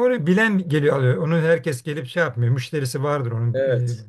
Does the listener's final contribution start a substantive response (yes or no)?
no